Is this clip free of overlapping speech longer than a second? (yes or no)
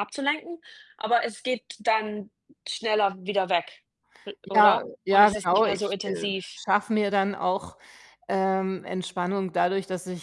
no